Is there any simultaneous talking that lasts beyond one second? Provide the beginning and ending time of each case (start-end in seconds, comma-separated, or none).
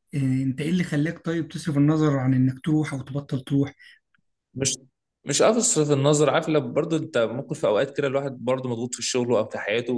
none